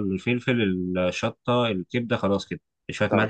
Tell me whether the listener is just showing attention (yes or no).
yes